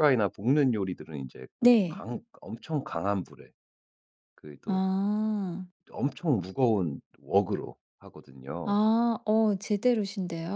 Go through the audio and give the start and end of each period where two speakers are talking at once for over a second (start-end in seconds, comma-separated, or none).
none